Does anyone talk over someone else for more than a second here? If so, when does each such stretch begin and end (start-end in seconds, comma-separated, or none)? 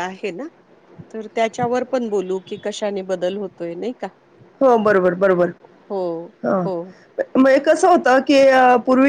none